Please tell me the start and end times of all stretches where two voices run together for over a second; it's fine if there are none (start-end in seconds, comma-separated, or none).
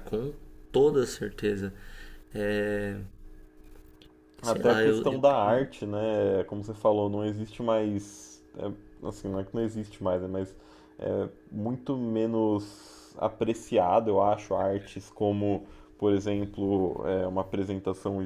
4.4-5.7